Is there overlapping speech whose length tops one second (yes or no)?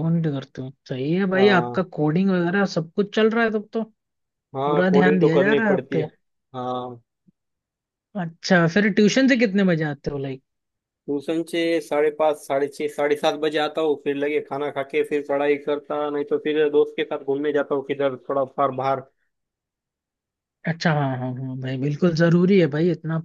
yes